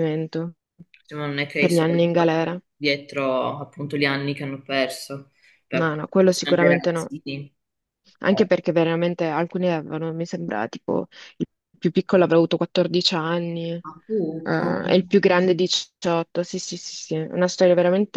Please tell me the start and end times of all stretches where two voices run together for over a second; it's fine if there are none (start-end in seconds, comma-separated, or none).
5.7-7.1